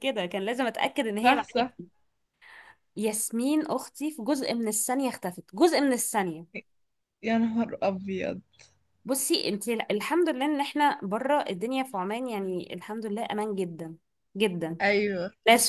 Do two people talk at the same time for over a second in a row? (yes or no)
no